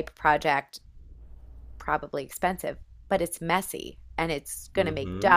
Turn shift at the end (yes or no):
no